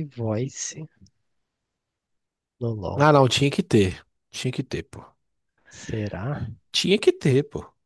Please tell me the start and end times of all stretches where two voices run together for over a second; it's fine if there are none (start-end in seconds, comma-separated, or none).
none